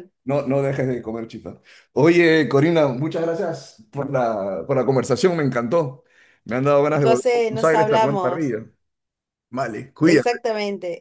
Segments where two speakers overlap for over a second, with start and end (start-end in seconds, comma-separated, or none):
6.9-8.6